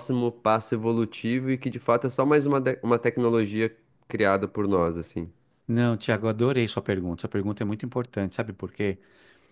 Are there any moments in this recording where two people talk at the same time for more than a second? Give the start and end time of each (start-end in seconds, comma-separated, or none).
none